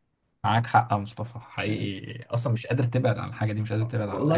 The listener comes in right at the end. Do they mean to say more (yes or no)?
yes